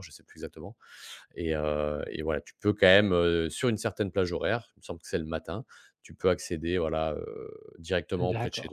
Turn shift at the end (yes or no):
yes